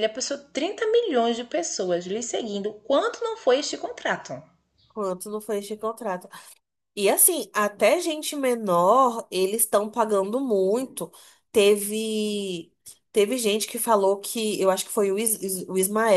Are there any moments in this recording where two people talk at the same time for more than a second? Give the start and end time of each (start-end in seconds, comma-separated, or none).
none